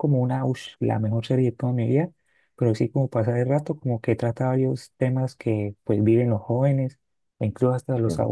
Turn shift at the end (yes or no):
no